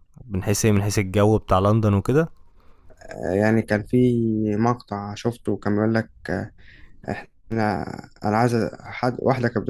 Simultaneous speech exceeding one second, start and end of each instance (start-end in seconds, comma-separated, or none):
none